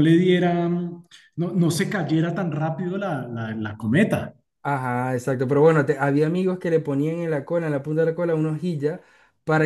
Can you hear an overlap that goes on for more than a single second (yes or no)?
no